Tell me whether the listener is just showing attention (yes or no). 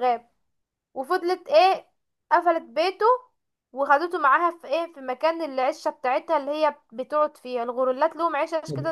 no